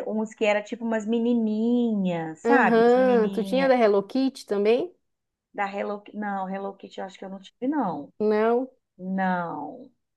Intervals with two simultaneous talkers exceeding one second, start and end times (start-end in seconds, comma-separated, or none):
2.4-3.8